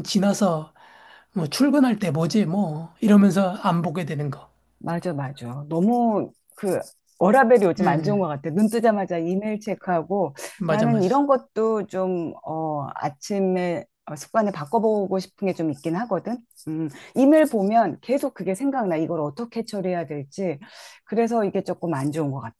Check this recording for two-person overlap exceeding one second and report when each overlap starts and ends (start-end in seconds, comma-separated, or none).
none